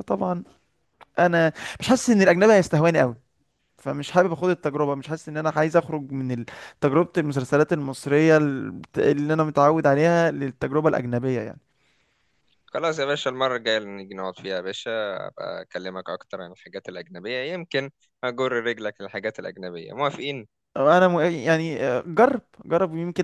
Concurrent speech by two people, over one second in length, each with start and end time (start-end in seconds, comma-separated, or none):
none